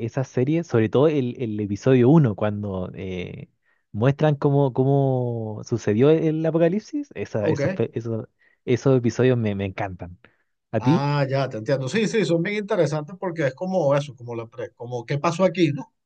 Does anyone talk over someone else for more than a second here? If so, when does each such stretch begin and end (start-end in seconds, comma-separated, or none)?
none